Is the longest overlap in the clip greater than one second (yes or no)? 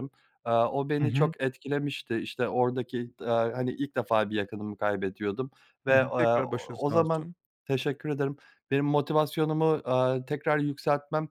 yes